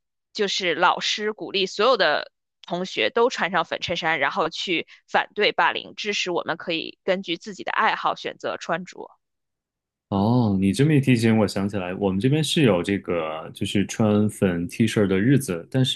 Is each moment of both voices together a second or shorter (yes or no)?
yes